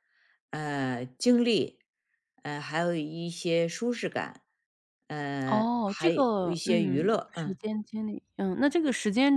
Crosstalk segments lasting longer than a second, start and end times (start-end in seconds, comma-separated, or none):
5.5-7.6